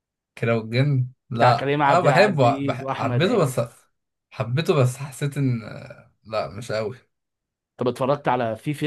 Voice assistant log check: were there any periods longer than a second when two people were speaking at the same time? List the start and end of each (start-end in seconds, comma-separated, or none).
1.3-3.6